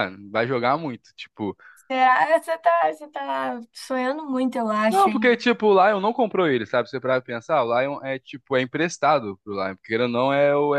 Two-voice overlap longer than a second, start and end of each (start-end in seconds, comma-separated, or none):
none